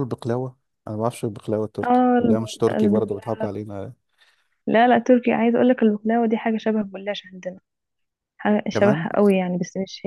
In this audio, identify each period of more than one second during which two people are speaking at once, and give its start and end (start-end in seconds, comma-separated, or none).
1.8-3.3